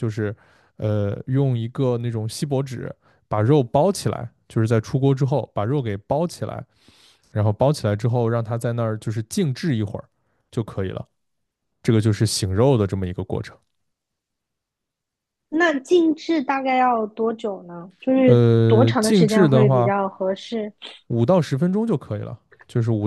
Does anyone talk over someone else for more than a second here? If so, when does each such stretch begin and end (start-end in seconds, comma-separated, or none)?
18.2-19.9